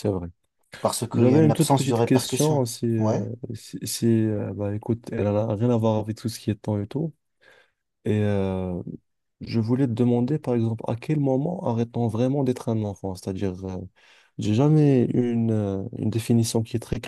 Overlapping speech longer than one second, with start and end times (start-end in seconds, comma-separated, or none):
1.1-3.2